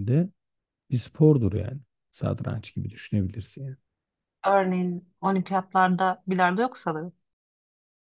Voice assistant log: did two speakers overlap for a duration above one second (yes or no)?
no